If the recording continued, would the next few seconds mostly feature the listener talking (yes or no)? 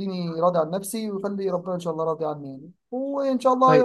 no